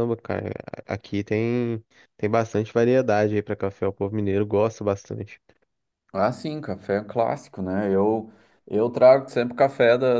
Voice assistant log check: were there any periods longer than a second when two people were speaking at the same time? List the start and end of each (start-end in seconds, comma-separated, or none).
none